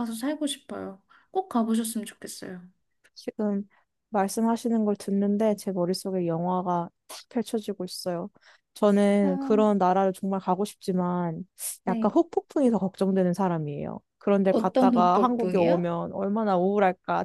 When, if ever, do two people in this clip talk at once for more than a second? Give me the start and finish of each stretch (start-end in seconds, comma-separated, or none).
14.5-15.9